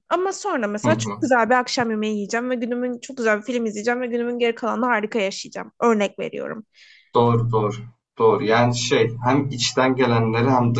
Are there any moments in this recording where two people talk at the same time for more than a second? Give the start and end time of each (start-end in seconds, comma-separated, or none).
none